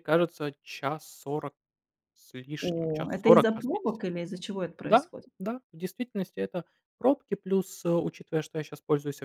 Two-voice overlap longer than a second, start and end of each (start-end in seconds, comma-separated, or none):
2.6-4.1